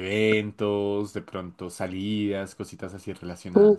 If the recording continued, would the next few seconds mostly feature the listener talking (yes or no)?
yes